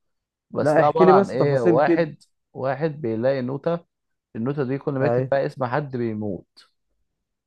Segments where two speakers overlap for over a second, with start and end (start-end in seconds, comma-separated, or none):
0.6-2.1